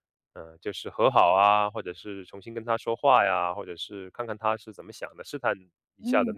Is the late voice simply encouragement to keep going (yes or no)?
yes